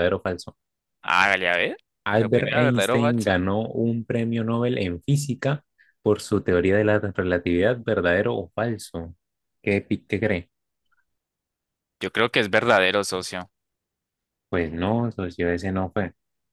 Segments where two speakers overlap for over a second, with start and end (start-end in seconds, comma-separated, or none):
2.2-3.4